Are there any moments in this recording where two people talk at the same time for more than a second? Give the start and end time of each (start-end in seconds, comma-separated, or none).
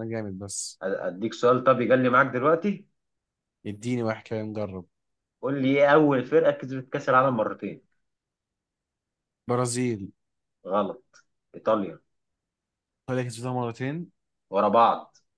none